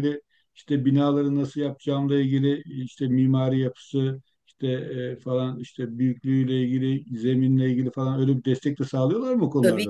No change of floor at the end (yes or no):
no